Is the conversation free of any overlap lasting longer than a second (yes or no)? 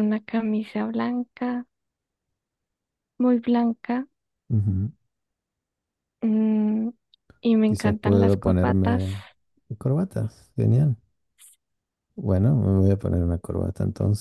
no